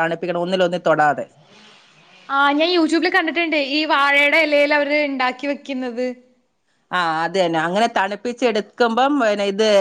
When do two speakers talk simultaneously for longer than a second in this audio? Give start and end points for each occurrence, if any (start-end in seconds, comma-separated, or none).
none